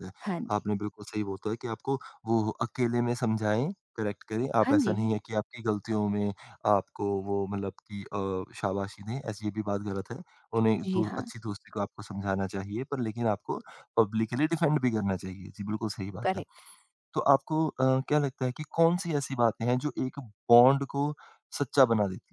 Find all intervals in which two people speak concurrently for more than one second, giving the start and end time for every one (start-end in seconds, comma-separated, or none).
none